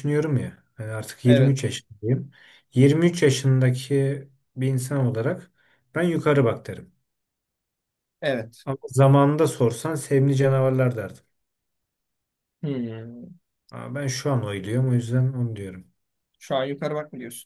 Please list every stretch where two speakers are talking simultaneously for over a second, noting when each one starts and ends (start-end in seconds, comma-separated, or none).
none